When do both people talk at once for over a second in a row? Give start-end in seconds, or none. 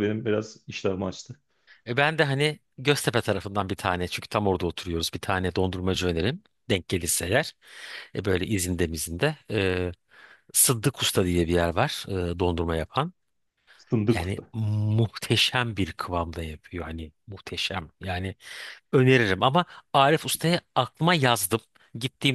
none